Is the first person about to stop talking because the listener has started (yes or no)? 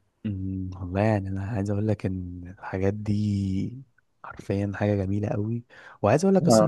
no